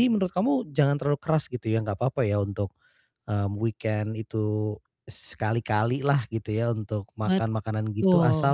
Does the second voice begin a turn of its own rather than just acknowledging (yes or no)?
no